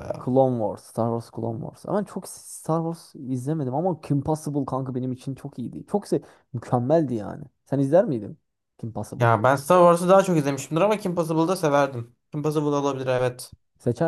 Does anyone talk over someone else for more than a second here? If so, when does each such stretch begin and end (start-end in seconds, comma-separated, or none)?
none